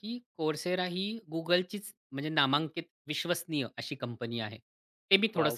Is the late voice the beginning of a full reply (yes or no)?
no